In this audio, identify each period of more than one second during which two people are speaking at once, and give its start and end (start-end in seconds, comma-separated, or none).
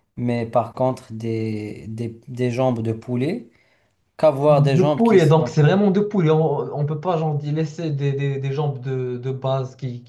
4.5-5.7